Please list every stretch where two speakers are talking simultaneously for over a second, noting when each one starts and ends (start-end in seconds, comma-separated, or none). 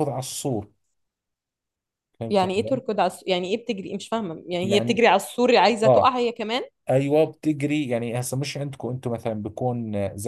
none